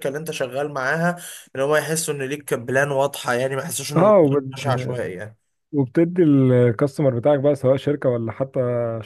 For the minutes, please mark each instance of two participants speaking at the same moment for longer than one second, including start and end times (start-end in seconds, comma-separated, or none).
none